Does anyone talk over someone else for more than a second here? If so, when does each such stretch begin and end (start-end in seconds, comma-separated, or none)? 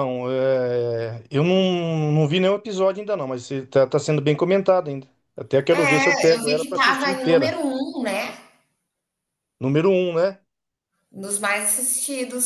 5.7-7.6